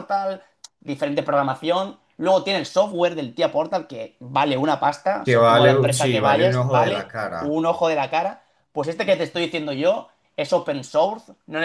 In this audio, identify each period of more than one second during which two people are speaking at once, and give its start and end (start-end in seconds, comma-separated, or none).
5.2-7.5